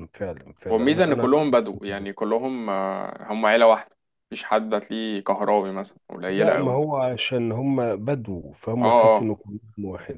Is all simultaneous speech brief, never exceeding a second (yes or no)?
no